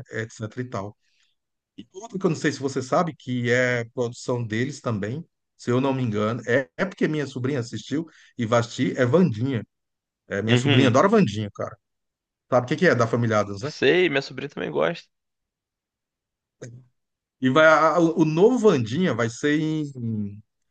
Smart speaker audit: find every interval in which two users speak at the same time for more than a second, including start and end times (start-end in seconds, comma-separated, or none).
none